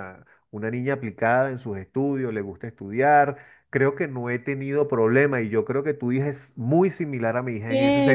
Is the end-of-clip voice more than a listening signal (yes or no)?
yes